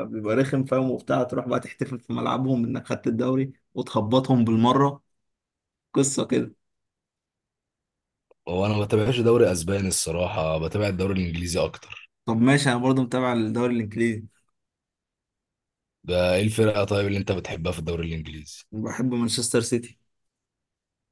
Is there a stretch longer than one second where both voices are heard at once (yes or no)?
no